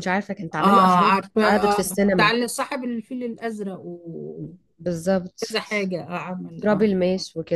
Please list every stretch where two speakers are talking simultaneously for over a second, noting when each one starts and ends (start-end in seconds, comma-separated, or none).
0.6-2.3